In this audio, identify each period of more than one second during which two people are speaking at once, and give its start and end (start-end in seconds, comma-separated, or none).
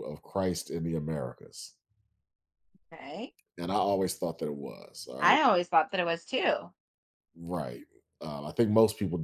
none